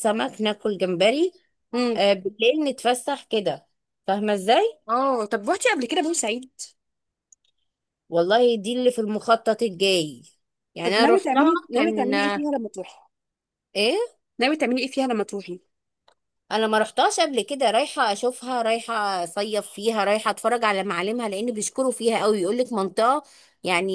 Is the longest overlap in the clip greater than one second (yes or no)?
yes